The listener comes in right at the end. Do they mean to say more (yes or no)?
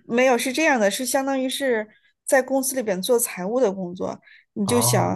no